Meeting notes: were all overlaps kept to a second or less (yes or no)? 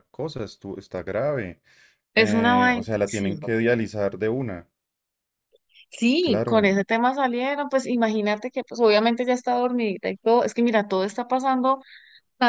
no